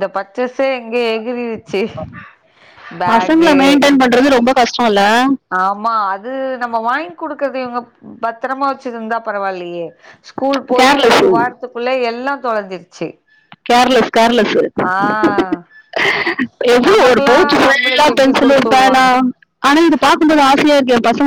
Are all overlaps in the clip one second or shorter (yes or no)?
no